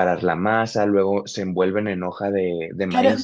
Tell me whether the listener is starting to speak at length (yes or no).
yes